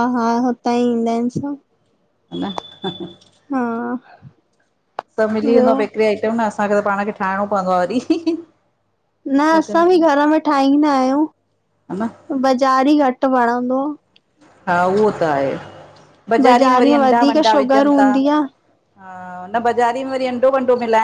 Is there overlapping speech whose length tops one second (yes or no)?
yes